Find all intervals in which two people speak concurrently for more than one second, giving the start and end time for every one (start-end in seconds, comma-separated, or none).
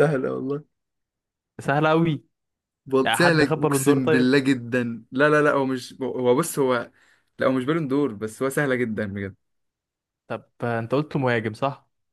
3.0-4.4